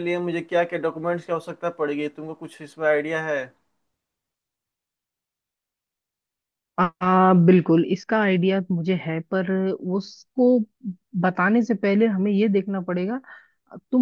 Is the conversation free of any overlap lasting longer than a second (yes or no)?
yes